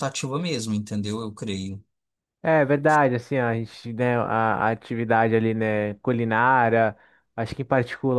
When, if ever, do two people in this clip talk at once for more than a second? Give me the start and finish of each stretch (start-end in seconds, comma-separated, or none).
none